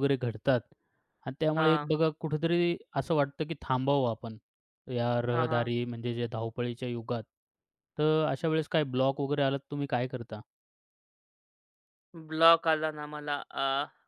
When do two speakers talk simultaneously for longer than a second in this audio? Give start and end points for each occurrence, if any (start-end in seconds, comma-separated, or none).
none